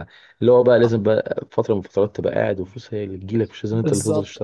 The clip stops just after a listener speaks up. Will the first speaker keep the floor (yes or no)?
no